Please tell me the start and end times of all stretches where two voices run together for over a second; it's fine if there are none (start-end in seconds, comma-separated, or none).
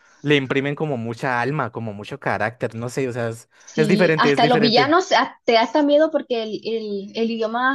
3.6-5.0